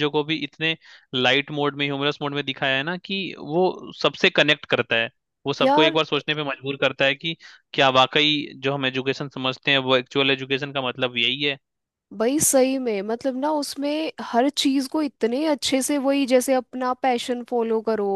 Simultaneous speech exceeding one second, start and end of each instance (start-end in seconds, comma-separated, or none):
none